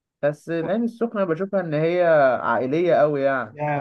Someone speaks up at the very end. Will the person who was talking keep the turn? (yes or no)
no